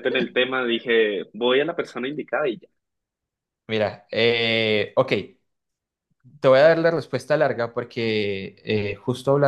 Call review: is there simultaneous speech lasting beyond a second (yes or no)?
no